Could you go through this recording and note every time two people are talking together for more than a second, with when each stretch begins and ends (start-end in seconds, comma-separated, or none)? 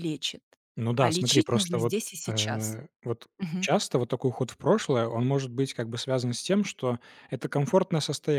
1.0-2.8